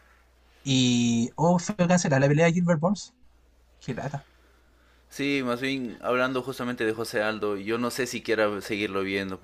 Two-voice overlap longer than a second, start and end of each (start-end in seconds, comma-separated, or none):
none